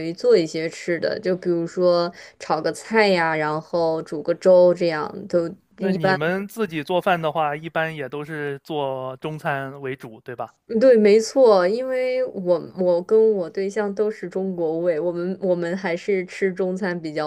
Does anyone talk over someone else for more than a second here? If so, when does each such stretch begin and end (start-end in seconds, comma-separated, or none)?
none